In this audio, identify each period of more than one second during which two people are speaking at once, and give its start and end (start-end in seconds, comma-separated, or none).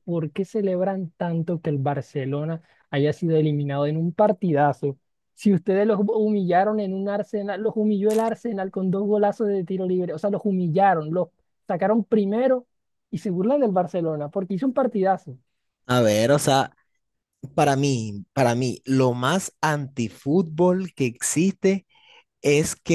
none